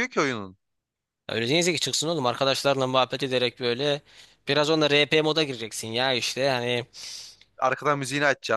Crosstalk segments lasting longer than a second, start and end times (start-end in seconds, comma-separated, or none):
none